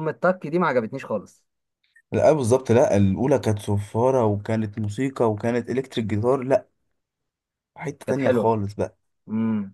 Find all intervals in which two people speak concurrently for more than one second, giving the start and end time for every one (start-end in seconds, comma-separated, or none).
none